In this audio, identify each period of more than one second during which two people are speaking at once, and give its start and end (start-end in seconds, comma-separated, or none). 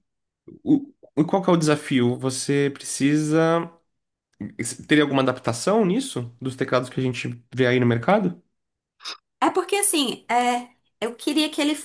none